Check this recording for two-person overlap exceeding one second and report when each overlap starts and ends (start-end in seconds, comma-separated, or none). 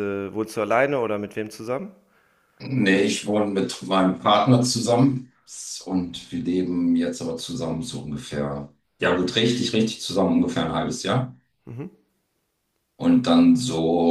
none